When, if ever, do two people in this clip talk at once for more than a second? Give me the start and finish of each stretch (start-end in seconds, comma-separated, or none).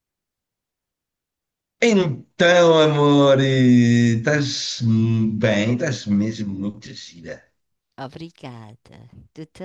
none